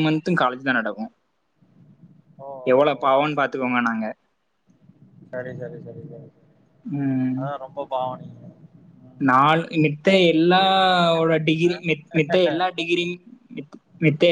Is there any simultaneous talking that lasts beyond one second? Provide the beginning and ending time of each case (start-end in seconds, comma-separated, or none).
10.4-11.7